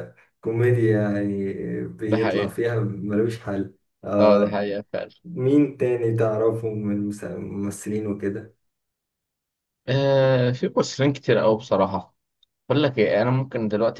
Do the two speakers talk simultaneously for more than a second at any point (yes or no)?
no